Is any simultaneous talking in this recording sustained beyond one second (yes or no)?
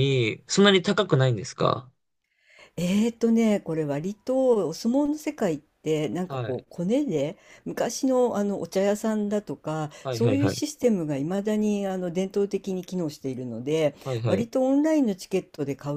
no